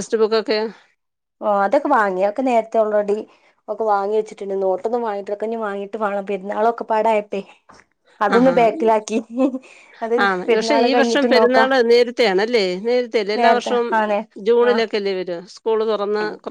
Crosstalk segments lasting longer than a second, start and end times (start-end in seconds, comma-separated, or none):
none